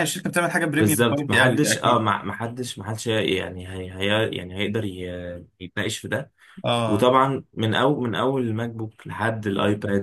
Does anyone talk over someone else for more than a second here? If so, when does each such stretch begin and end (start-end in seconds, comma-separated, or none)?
0.8-2.0